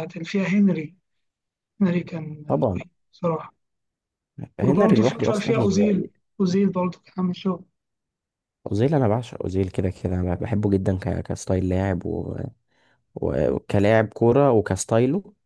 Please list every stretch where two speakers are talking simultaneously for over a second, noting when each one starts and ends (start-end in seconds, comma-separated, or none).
4.6-6.1